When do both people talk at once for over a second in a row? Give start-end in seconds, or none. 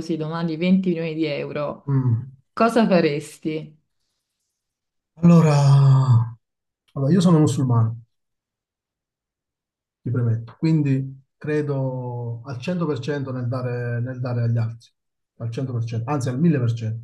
none